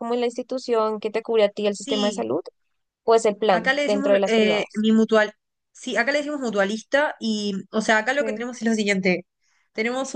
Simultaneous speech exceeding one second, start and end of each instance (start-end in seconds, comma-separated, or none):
3.5-4.8